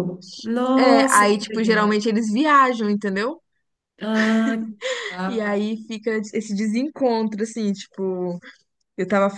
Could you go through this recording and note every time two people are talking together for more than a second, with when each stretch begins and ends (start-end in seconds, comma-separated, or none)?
0.8-2.1